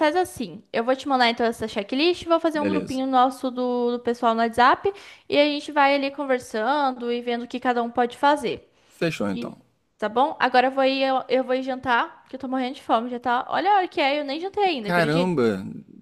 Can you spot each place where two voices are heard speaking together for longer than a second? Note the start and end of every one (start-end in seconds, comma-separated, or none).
none